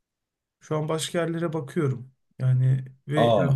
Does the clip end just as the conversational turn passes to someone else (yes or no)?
no